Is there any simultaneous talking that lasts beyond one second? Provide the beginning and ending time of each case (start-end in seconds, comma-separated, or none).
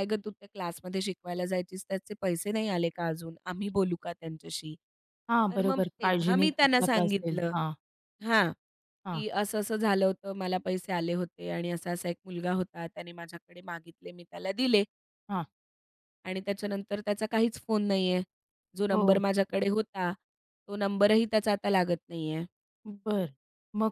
5.5-7.5